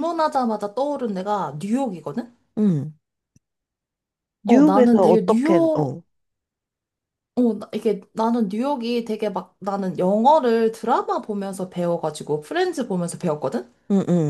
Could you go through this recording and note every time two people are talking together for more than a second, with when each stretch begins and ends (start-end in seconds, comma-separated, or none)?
4.5-6.0